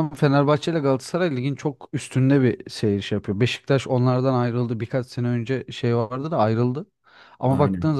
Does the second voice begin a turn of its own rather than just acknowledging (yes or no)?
no